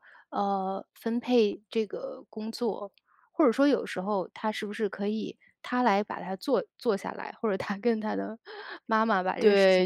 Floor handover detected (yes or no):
yes